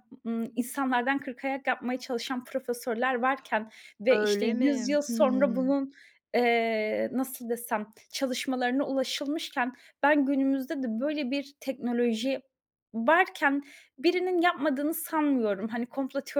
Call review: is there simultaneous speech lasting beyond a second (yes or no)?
yes